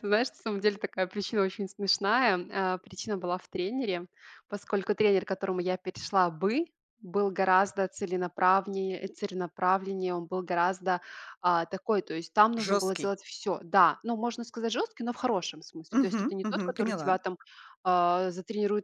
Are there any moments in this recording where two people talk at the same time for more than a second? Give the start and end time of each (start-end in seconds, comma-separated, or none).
15.9-17.2